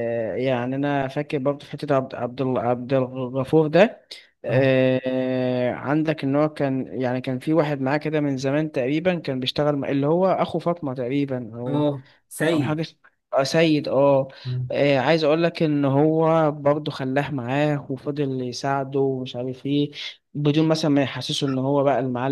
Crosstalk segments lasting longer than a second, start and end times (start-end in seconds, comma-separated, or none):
none